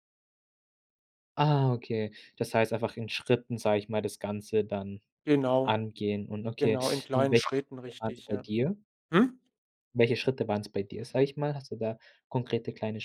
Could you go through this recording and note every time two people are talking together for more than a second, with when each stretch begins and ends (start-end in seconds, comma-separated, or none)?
6.6-8.4